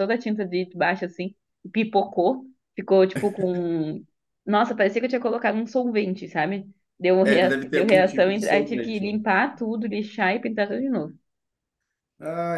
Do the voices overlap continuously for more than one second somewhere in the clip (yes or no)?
yes